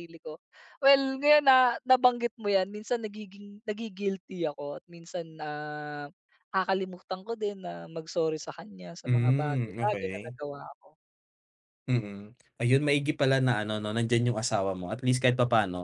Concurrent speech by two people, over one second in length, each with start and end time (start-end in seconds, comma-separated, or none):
9.1-10.3